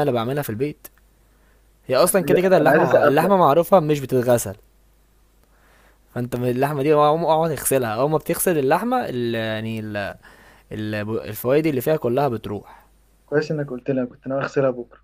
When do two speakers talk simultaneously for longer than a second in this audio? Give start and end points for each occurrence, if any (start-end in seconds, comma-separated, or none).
2.0-3.4